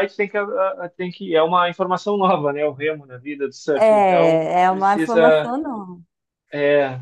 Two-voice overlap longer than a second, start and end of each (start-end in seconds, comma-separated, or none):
3.8-5.5